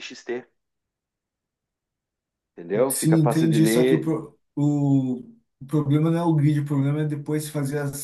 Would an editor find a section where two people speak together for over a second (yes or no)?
yes